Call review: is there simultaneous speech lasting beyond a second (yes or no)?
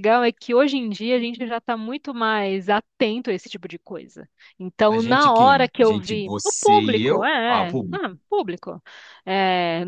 yes